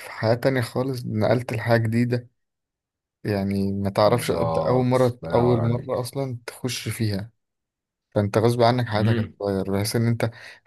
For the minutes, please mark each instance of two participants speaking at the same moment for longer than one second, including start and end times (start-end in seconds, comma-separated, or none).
4.0-6.1